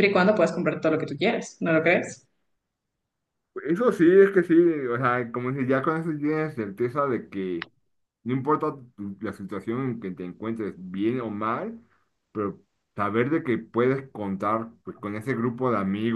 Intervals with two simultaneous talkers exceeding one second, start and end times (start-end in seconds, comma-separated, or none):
none